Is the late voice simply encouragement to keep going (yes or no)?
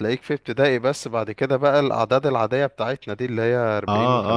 no